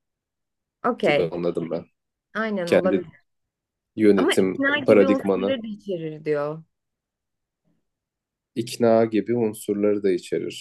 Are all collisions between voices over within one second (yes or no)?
no